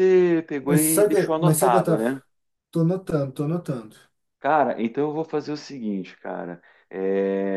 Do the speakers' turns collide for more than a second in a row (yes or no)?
yes